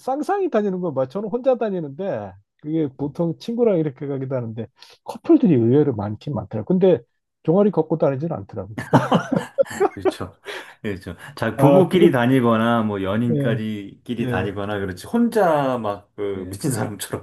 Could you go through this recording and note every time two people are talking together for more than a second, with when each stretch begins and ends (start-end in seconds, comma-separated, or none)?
none